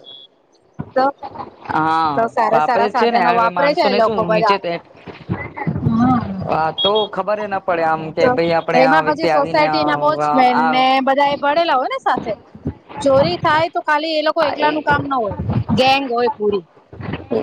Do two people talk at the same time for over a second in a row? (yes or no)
yes